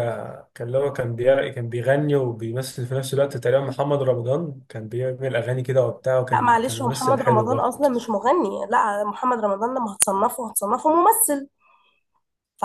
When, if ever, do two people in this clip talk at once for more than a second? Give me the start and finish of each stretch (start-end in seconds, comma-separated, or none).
6.3-7.7